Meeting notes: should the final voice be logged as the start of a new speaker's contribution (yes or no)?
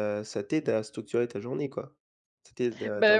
yes